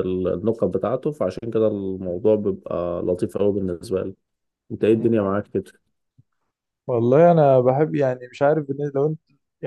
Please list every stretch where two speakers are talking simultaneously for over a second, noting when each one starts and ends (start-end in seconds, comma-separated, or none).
none